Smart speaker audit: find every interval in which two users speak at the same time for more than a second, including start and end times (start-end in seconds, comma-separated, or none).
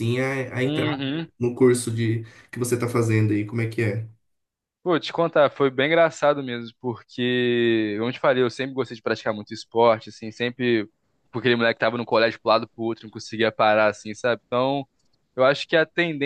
none